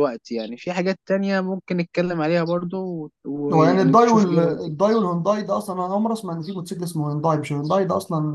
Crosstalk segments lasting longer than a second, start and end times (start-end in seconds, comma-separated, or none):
3.5-4.7